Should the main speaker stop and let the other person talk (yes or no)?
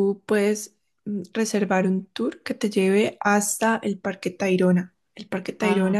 no